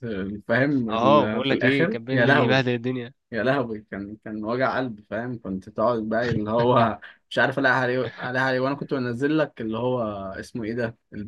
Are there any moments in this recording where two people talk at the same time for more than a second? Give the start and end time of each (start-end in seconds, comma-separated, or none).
0.9-2.6